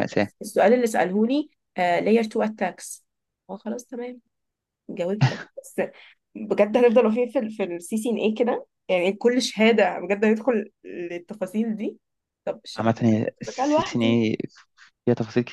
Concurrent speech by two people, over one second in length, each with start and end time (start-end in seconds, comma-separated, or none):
12.8-14.2